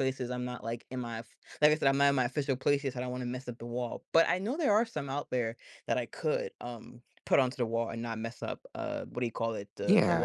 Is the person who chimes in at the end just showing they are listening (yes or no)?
no